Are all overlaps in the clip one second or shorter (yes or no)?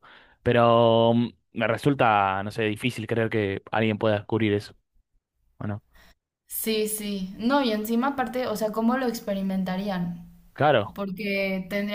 yes